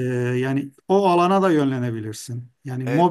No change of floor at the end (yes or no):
no